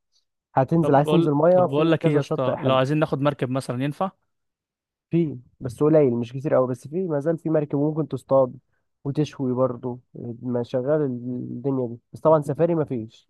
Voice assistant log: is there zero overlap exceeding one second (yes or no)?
no